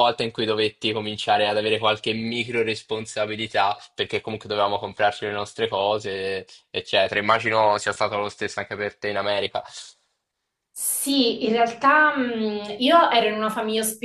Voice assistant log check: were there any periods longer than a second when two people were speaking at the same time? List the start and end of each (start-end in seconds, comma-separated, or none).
none